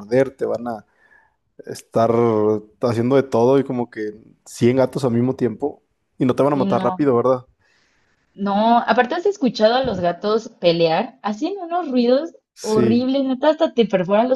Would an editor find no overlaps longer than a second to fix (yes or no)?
yes